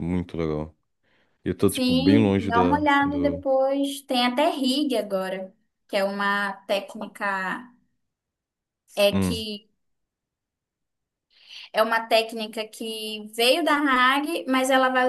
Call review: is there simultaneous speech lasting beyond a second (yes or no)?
yes